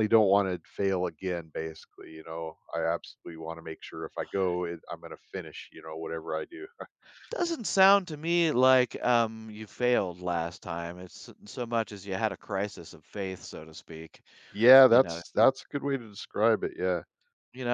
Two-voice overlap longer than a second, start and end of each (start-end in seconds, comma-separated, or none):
none